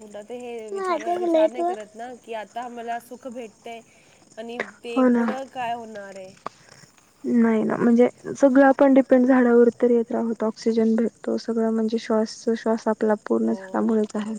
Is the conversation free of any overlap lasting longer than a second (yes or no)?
yes